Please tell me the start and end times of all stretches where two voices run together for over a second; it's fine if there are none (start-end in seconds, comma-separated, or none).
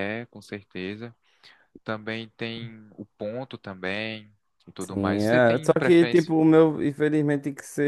4.8-6.3